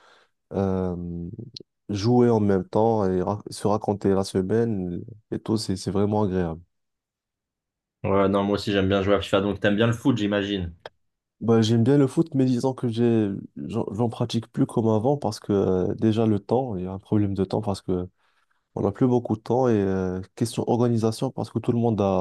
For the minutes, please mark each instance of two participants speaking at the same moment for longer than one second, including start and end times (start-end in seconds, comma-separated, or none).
none